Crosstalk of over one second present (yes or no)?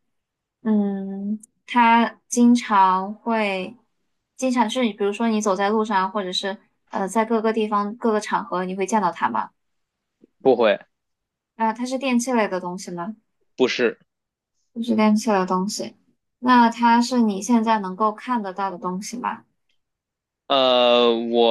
no